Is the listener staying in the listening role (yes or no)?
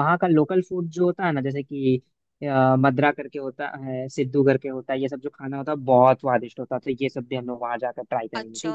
no